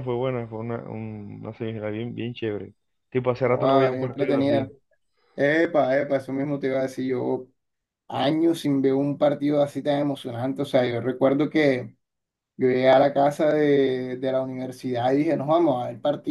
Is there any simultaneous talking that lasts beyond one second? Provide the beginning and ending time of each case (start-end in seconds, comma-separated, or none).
3.4-4.7